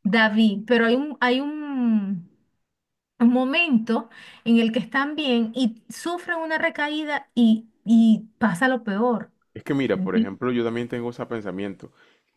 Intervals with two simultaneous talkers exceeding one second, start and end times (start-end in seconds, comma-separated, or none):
none